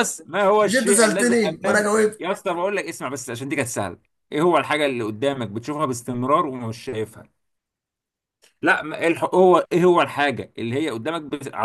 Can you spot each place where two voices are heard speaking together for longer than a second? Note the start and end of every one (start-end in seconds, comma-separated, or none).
0.6-2.2